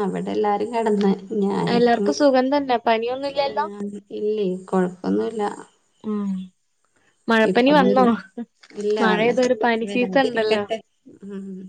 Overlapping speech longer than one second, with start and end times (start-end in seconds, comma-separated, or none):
9.0-10.6